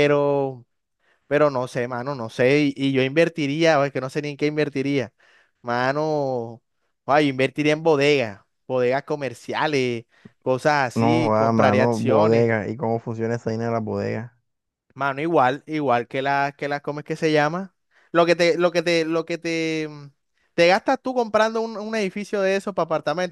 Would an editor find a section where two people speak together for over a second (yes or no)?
yes